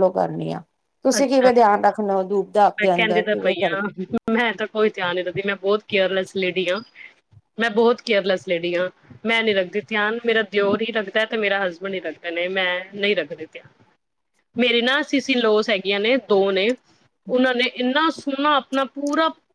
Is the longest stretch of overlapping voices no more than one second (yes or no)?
yes